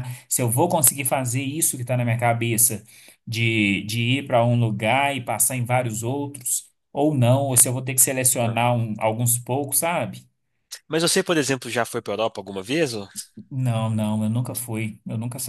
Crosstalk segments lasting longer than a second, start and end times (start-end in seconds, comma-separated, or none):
none